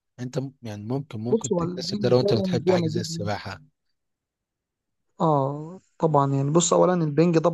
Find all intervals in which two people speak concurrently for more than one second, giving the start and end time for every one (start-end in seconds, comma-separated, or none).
1.3-3.3